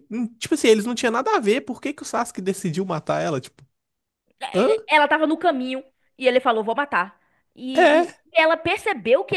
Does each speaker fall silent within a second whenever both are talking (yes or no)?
yes